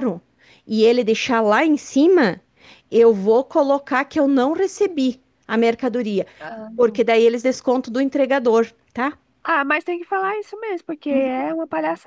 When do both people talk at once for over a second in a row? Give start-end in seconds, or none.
none